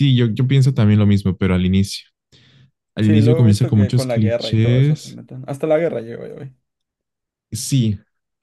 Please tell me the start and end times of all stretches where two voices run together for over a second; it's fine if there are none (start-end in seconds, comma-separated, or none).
3.0-5.2